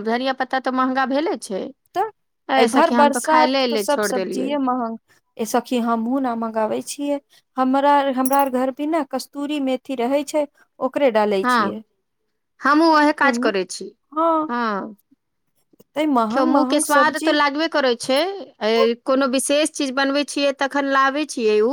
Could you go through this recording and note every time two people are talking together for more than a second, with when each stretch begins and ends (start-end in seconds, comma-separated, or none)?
2.6-4.5